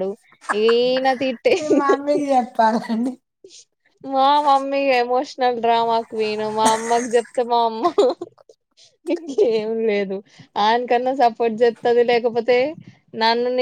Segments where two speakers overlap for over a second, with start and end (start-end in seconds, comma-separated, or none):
none